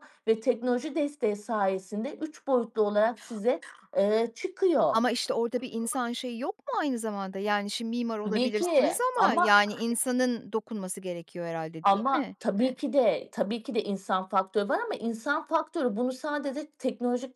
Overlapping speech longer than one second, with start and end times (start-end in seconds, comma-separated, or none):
8.3-9.5